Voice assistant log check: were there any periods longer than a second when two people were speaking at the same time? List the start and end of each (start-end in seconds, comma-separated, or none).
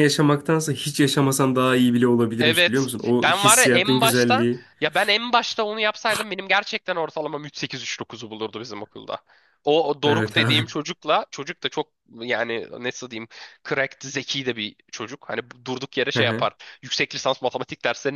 2.4-4.6